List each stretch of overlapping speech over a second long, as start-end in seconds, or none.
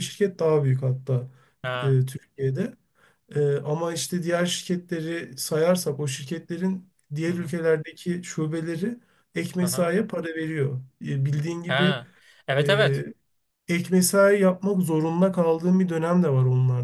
none